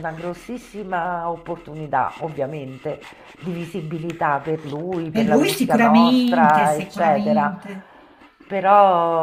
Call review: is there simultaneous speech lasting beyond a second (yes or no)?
yes